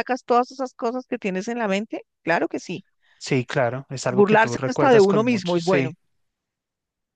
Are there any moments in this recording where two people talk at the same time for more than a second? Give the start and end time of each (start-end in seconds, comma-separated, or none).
4.1-5.9